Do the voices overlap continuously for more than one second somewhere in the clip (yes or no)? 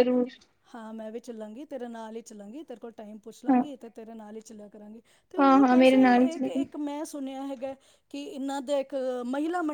yes